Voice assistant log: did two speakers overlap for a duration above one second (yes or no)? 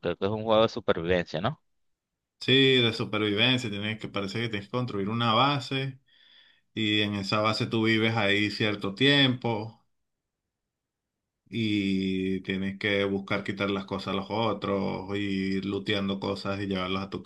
no